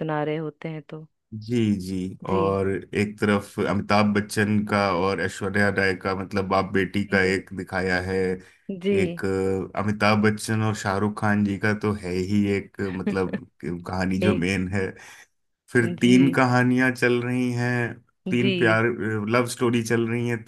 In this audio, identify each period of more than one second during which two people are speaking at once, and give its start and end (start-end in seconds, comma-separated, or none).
none